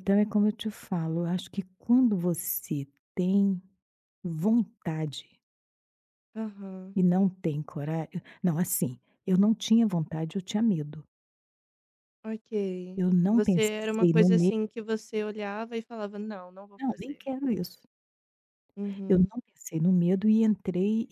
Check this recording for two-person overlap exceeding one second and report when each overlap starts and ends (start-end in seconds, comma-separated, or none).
13.0-14.5